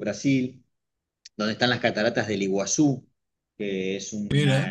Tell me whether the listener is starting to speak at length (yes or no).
no